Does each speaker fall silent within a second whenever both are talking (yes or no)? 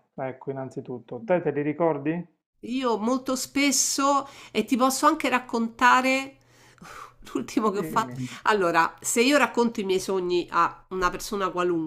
yes